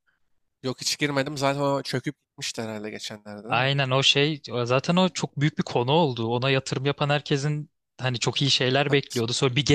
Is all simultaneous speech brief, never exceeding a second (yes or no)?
yes